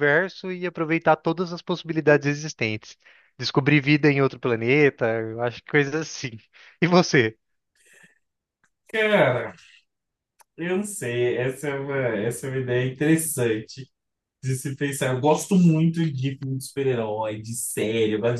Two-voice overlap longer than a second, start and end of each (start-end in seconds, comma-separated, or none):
none